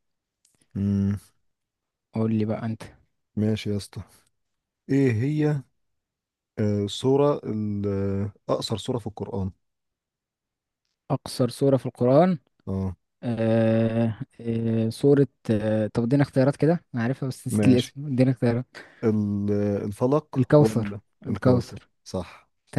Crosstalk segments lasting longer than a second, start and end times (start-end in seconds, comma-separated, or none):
20.4-21.9